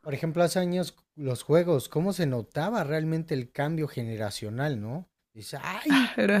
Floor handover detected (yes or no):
no